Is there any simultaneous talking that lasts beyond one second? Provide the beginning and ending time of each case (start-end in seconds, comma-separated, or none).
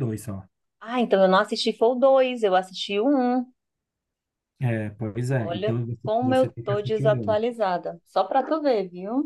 5.4-7.4